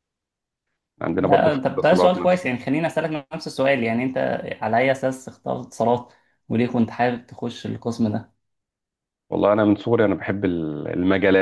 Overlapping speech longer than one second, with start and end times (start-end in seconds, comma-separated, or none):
1.1-2.5